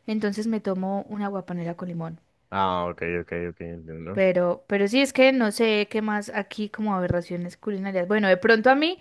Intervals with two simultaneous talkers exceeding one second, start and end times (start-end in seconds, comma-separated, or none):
none